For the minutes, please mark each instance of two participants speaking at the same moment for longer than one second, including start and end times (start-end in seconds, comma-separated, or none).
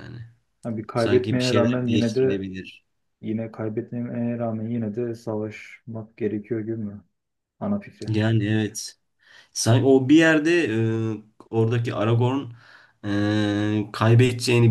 0.9-2.5